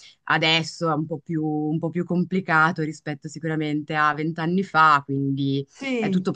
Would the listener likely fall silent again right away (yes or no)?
yes